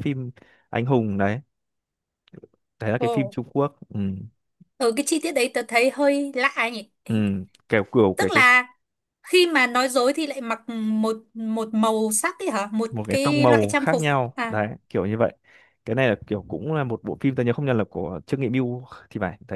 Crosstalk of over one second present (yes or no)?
yes